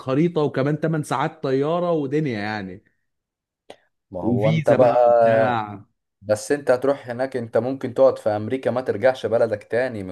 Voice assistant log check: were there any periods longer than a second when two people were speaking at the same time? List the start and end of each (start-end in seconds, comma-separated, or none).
4.2-5.6